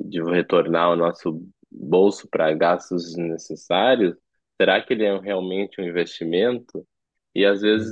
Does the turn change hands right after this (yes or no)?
no